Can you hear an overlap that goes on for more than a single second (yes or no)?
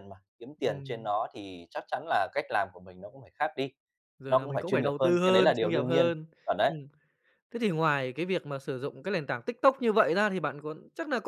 yes